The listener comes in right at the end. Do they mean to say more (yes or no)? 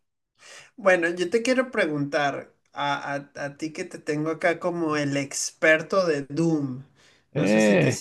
no